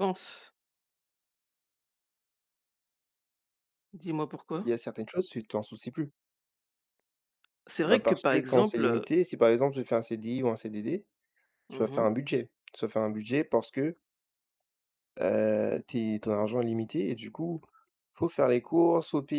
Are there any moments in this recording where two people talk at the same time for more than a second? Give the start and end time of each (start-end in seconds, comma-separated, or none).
7.8-9.1